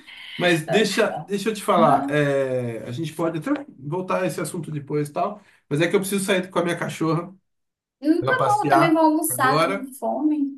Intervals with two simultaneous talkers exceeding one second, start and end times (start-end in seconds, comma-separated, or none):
8.2-9.9